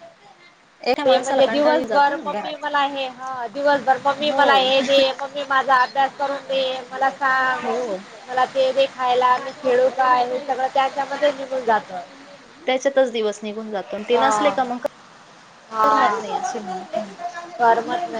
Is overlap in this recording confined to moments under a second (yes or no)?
no